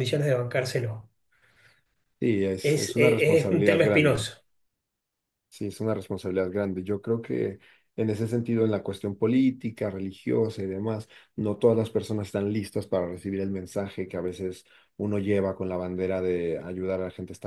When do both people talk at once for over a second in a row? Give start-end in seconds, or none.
2.6-4.3